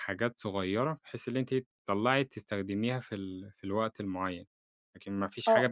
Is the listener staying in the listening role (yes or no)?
no